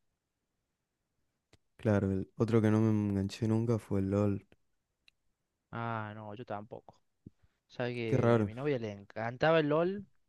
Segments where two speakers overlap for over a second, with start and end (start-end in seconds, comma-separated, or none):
none